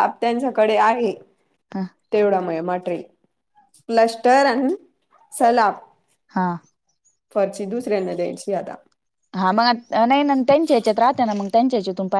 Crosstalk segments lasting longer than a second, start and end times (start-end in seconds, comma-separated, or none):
none